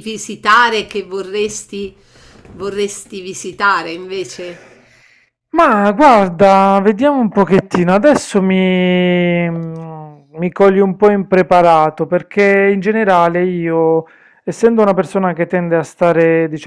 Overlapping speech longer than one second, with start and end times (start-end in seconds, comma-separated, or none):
none